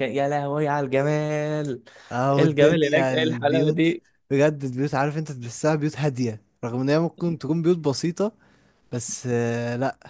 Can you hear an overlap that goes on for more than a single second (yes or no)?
yes